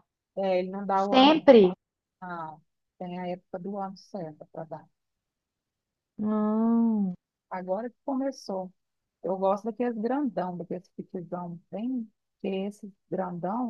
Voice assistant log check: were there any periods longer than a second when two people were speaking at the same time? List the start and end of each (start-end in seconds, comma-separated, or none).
none